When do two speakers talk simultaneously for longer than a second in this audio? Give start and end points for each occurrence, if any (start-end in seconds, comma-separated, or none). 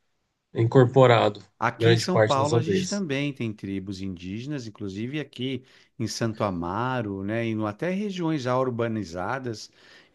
1.6-3.0